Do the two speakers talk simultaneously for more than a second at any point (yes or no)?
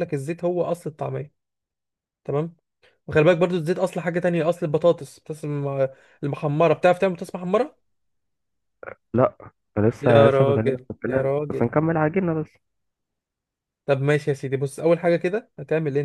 yes